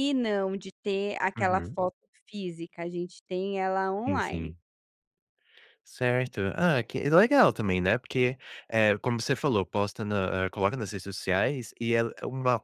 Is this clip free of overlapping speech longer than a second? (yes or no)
yes